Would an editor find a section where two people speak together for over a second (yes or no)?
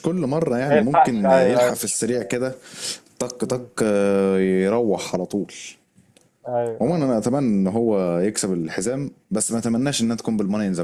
yes